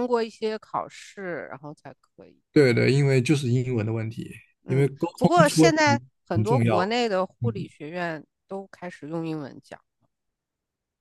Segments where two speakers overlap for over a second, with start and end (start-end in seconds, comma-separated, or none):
4.7-6.8